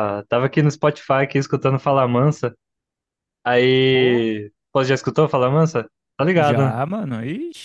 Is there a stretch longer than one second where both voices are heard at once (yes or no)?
no